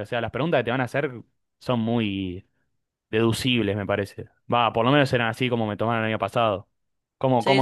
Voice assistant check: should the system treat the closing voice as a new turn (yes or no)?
yes